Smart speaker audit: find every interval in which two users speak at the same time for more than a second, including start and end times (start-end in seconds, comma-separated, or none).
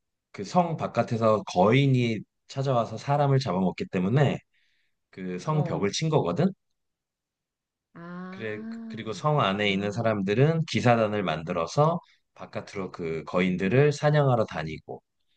8.3-10.1